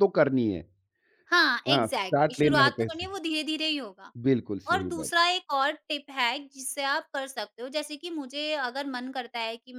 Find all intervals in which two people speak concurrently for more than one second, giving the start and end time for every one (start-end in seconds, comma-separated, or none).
1.7-3.0